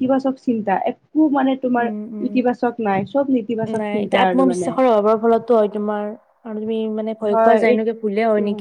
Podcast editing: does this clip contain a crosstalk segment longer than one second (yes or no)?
no